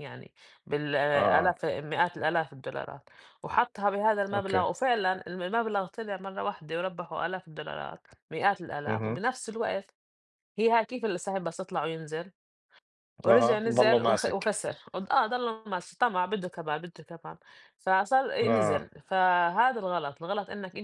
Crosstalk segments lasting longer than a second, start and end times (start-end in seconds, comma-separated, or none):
13.3-14.5